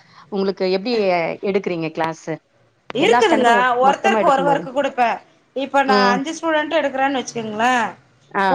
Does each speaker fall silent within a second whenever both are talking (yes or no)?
yes